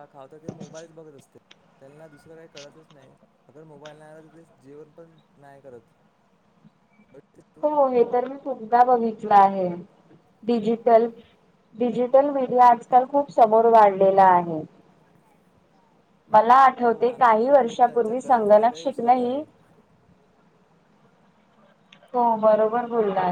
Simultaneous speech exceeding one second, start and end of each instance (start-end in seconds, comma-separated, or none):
16.8-19.4